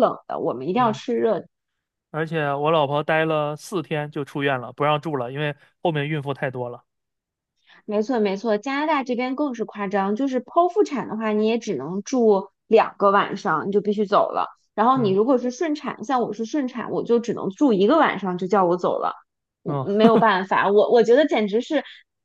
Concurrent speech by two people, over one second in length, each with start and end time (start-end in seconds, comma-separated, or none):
none